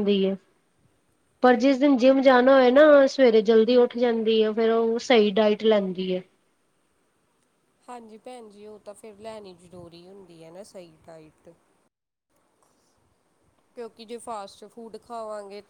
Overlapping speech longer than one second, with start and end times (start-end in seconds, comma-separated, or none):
none